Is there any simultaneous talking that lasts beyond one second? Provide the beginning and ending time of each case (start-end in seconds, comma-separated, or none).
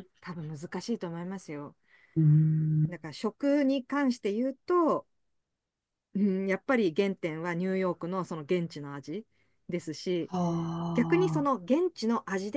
none